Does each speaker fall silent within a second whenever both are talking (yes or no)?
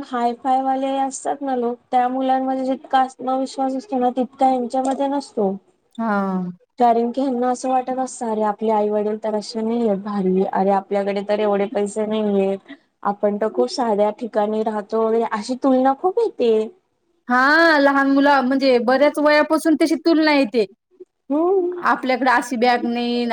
yes